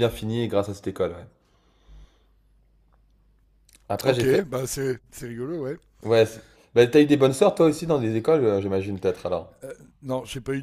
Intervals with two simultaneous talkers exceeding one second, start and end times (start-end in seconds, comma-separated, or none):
none